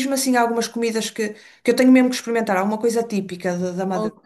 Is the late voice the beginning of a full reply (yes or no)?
yes